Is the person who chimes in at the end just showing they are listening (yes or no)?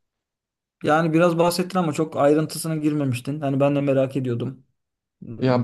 no